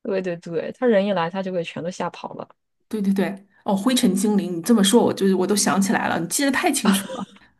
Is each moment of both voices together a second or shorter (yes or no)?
yes